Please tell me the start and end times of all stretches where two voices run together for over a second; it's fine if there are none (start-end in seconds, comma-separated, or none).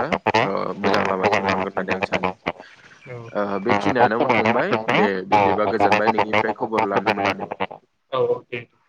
3.1-4.6